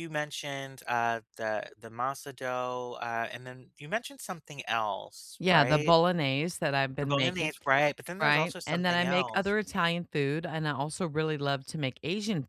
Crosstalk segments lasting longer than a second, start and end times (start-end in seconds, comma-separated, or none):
8.2-9.6